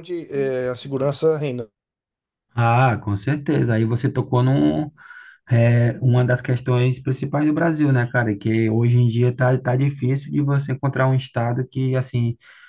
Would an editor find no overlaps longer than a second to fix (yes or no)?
yes